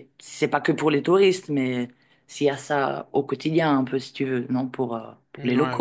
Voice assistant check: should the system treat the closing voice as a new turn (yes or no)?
yes